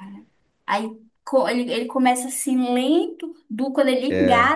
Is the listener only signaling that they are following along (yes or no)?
yes